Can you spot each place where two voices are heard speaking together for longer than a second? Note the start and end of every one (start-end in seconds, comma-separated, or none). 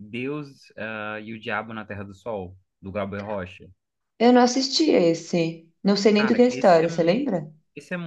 6.1-7.3